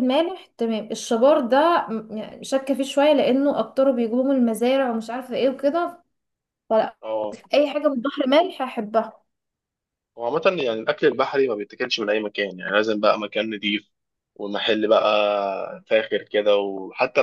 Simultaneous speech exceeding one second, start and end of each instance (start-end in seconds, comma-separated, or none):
none